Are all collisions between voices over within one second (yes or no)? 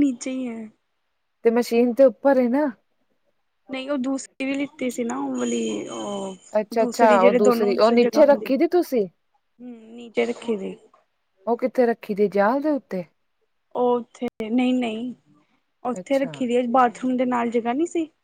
no